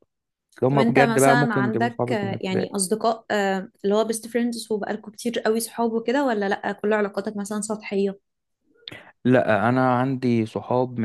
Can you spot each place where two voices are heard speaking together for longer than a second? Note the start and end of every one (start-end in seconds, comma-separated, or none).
0.7-2.9